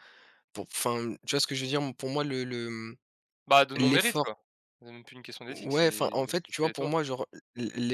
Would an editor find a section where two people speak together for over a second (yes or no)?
yes